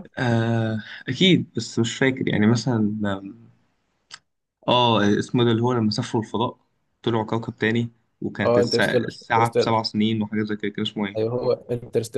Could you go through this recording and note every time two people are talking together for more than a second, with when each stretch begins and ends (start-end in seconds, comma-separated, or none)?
8.4-9.8